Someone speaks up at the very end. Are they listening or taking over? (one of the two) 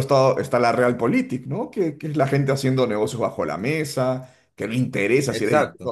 listening